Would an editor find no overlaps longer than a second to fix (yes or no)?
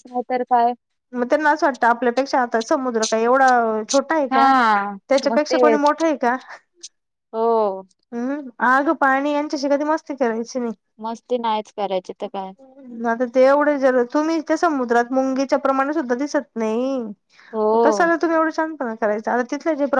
yes